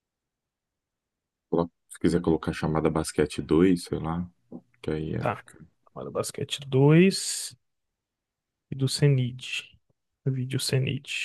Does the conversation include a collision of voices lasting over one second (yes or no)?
no